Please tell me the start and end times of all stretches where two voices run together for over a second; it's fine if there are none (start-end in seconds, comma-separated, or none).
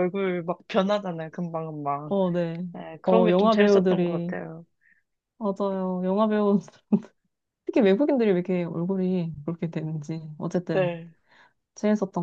3.0-4.4